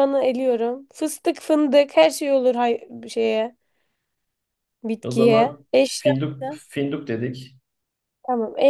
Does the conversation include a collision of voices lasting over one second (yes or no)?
yes